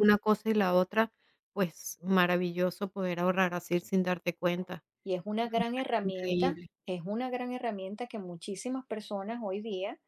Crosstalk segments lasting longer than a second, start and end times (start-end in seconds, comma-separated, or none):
5.4-6.7